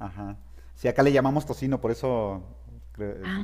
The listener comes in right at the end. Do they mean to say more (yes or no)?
no